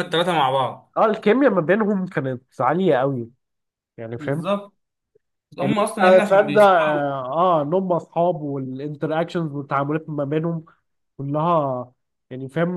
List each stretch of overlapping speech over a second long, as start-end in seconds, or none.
5.6-7.0